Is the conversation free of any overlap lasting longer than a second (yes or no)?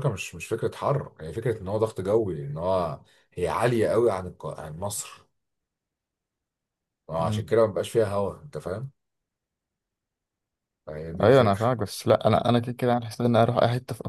yes